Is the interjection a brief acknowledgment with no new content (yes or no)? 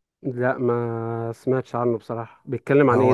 no